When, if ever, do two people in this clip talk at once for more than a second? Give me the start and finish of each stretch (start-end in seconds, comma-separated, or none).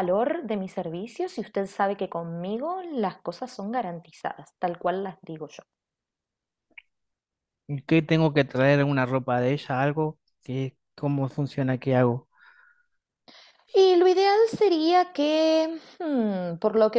none